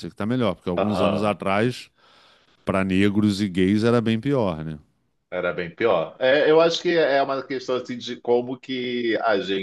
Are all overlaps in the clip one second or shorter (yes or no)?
yes